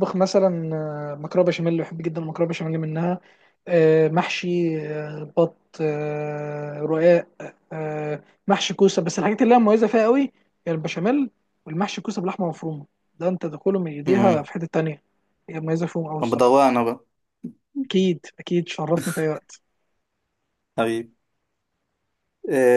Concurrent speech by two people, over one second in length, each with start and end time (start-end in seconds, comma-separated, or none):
none